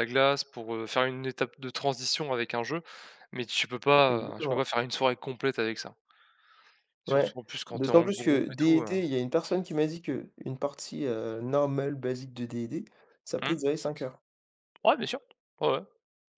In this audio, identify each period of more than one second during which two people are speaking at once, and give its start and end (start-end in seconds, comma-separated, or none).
7.1-8.9